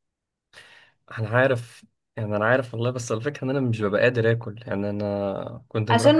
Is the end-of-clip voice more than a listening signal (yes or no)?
yes